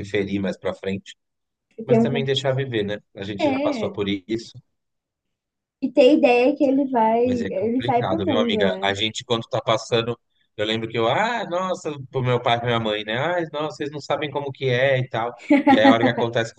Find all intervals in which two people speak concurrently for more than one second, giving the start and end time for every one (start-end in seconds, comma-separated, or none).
7.2-8.9